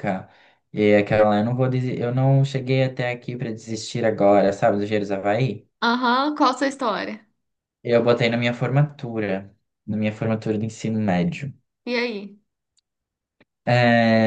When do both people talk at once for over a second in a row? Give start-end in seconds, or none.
none